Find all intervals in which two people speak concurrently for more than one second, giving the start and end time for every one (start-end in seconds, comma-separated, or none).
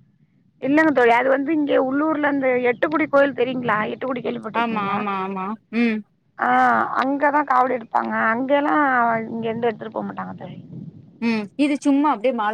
none